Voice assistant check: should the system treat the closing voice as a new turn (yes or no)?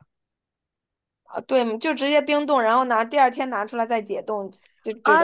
yes